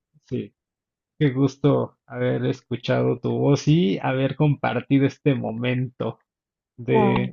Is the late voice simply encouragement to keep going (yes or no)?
yes